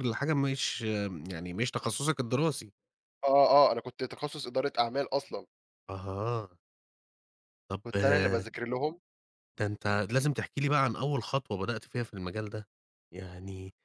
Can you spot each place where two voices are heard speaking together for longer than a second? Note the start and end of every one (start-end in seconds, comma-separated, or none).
none